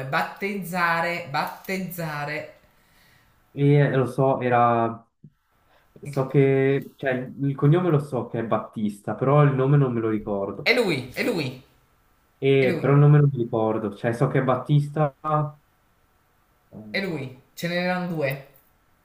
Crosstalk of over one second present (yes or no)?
no